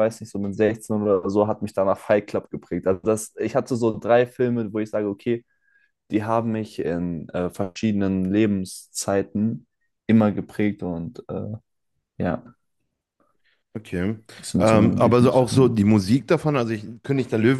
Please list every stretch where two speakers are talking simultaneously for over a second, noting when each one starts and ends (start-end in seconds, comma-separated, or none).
14.6-15.8